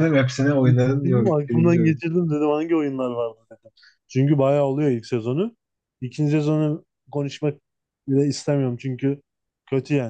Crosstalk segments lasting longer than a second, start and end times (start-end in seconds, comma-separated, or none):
0.7-2.0